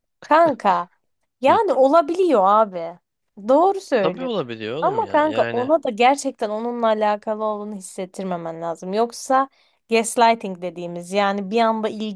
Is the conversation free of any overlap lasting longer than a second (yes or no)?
no